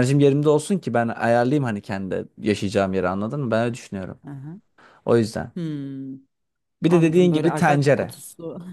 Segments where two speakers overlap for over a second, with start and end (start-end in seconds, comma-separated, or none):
6.9-8.1